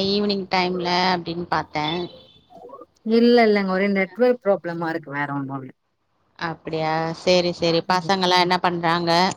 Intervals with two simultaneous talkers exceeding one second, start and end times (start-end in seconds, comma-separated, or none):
none